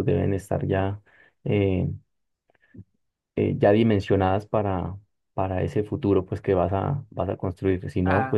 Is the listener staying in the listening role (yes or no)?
yes